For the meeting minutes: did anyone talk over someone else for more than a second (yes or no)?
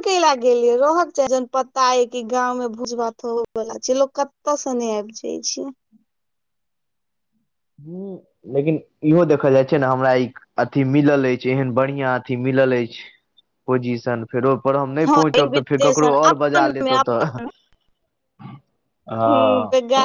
yes